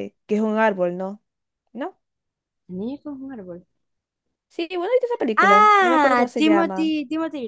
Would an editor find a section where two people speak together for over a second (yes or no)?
yes